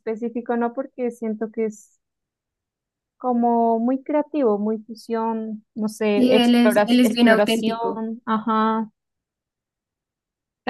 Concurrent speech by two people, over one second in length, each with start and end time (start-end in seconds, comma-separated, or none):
6.2-7.8